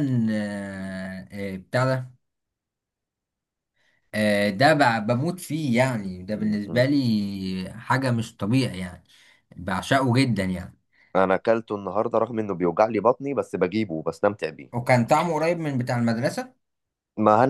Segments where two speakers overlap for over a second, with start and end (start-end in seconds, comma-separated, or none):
none